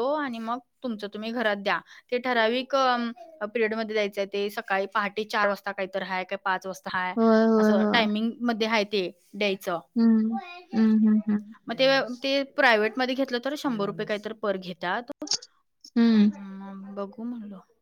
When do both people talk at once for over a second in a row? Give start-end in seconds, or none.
none